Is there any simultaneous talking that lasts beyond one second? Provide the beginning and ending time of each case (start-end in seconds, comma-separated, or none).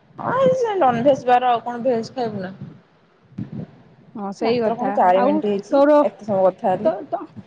4.5-6.9